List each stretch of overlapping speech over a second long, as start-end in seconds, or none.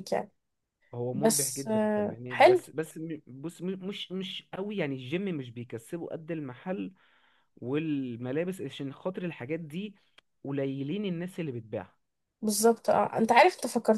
1.1-2.6